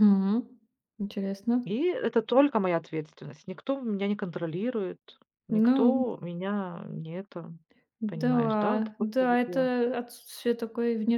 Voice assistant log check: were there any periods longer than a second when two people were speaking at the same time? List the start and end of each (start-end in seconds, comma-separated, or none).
8.1-9.7